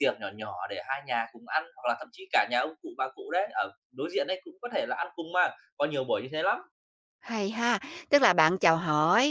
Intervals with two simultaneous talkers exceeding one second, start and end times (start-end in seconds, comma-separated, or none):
none